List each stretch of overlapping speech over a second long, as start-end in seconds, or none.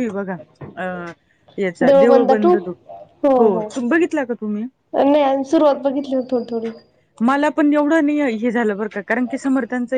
none